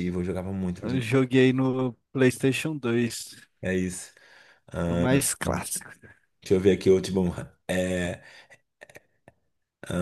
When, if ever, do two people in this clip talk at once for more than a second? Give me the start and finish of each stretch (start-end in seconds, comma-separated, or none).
none